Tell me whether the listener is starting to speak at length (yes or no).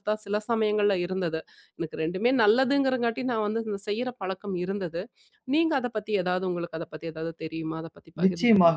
yes